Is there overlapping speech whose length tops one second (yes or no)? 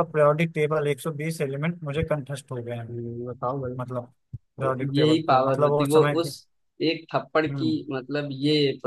yes